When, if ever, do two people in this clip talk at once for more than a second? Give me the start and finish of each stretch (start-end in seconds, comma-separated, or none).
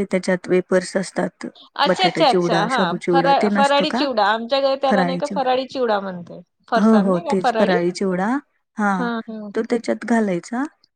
1.9-4.0